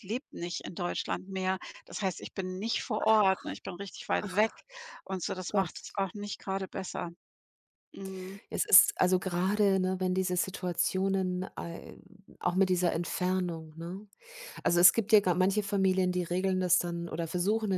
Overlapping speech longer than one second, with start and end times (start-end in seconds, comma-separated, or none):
none